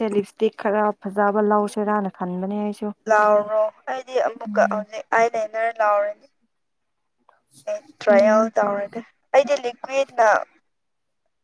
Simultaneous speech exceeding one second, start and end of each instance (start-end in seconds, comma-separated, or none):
none